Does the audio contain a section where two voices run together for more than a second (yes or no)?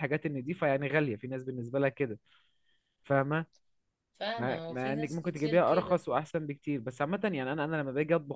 yes